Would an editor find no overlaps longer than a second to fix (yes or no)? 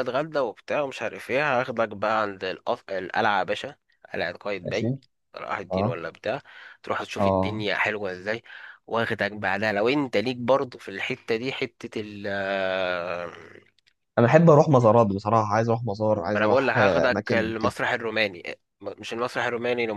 no